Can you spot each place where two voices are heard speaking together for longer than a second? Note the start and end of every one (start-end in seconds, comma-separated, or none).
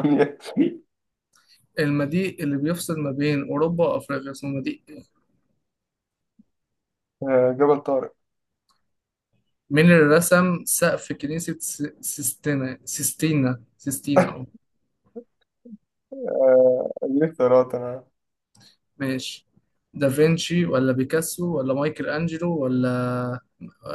none